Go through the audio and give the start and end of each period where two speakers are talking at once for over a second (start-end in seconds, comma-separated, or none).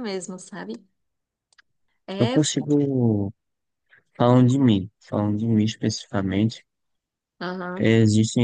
none